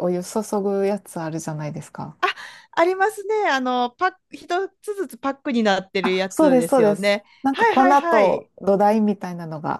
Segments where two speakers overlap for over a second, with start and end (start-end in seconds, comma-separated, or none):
6.0-8.5